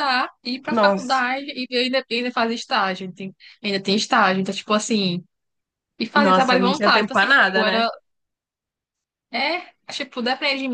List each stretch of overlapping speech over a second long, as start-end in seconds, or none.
6.2-7.8